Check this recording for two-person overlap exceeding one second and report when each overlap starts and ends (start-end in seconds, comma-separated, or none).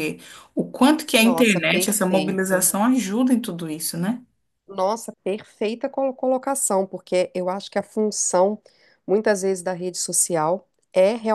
1.2-2.7